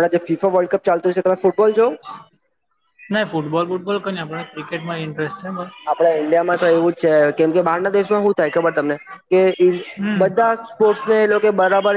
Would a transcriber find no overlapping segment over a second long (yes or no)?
yes